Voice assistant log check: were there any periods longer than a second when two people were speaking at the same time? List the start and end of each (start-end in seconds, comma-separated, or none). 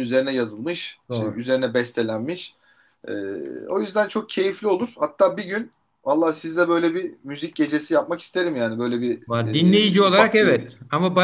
9.3-10.6